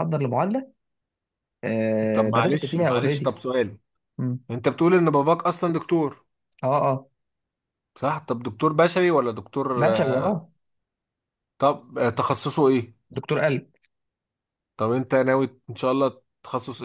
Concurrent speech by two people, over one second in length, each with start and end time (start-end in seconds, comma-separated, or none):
2.1-3.3